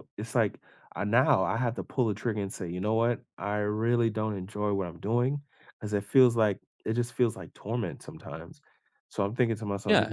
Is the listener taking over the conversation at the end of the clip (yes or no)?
yes